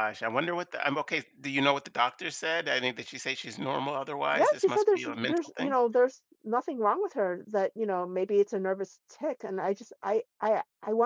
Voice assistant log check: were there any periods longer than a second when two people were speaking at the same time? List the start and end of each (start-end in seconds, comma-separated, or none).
4.3-5.8